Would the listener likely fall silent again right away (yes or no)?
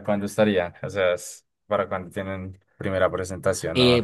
no